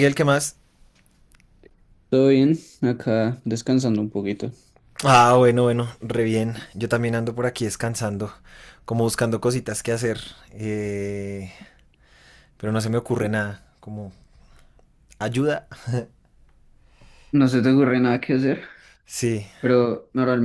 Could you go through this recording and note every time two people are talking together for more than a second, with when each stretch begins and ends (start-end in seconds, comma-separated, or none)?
none